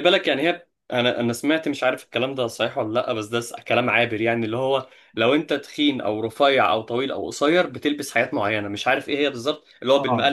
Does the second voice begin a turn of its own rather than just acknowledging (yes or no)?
no